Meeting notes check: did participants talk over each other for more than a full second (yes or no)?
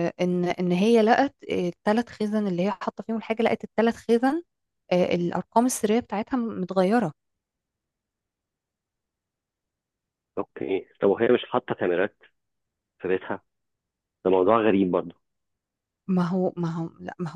no